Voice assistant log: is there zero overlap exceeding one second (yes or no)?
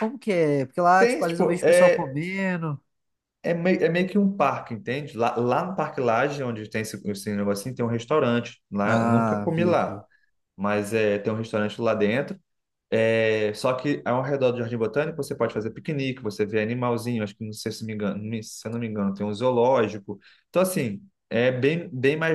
no